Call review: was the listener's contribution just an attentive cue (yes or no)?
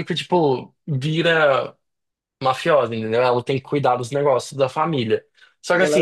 yes